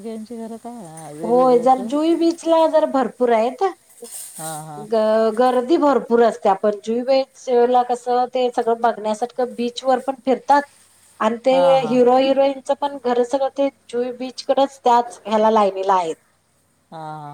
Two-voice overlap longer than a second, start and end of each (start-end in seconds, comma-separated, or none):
none